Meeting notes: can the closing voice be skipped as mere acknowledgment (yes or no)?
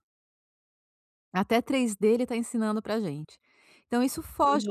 no